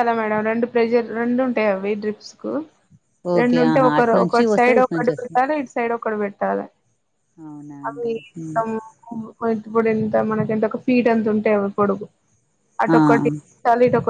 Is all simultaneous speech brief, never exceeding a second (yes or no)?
no